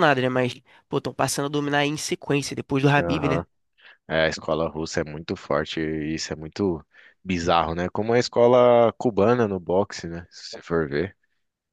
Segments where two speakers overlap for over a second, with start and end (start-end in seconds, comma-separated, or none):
none